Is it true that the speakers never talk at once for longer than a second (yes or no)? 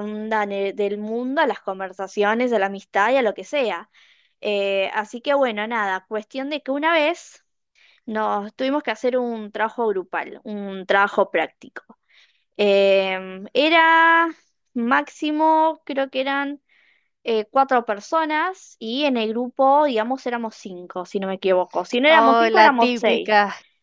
no